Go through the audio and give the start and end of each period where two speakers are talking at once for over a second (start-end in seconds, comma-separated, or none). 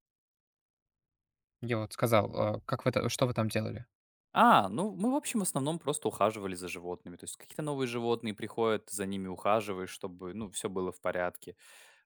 none